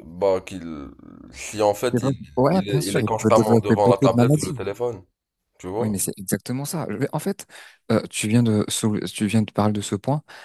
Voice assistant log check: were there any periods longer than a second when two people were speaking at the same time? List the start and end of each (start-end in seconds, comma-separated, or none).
1.9-4.6